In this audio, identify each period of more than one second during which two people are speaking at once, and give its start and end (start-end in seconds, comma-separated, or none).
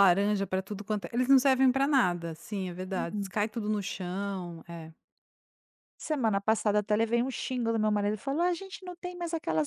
none